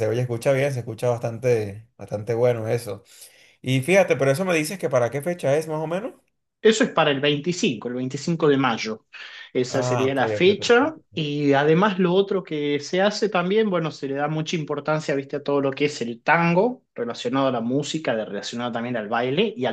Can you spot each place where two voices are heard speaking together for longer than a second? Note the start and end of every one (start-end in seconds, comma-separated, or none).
9.7-11.2